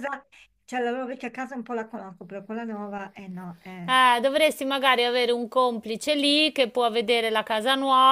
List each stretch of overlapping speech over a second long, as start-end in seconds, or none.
none